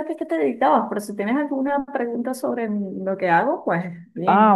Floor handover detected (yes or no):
yes